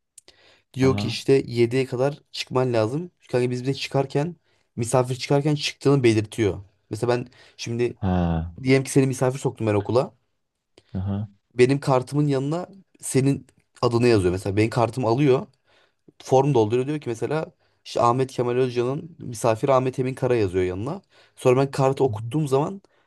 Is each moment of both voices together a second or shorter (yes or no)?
yes